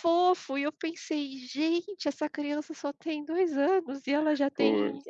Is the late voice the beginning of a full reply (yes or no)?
no